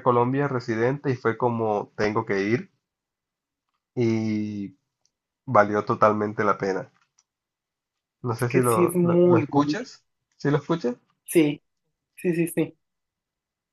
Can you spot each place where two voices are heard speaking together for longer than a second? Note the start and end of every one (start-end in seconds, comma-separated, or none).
8.4-9.8